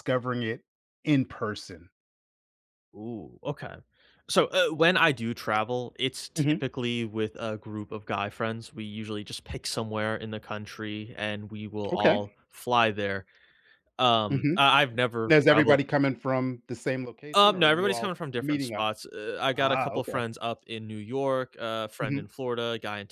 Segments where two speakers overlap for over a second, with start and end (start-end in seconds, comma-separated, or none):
17.3-18.9